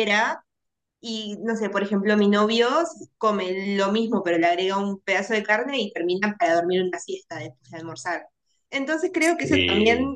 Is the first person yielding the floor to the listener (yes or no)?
no